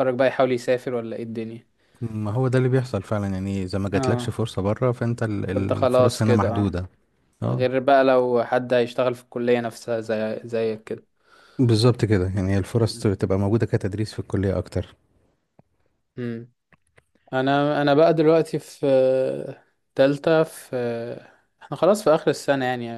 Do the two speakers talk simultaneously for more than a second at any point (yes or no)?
yes